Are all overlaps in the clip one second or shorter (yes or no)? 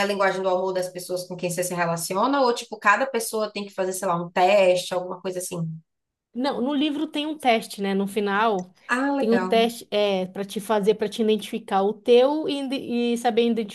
yes